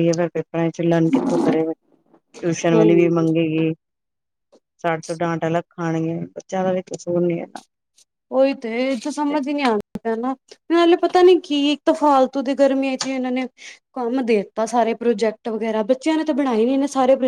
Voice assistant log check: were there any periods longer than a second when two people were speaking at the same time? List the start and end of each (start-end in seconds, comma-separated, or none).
none